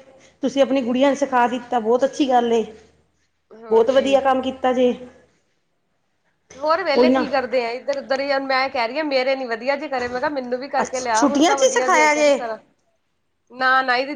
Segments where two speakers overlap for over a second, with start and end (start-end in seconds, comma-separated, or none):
10.8-12.1